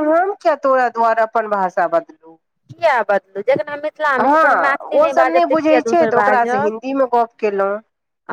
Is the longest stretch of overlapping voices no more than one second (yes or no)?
no